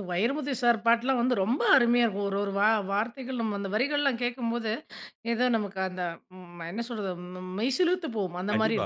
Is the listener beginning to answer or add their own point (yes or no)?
yes